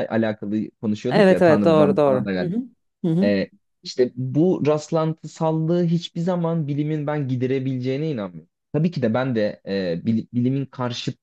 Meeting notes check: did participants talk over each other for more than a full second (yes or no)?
yes